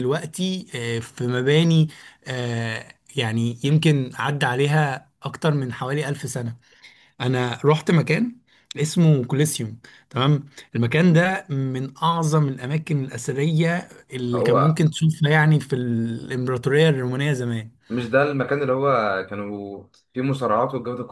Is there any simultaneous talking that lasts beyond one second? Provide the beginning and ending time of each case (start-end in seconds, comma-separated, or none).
none